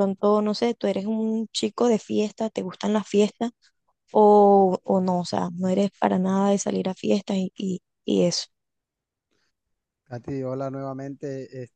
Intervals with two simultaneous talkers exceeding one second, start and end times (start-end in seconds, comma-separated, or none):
none